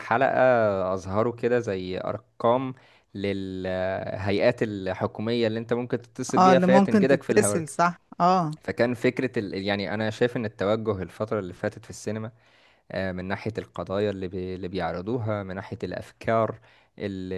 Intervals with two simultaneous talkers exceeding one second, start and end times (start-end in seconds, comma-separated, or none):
6.4-7.6